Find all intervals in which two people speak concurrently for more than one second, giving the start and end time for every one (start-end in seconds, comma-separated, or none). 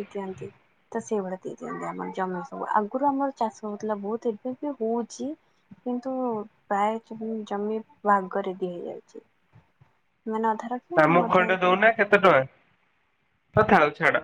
none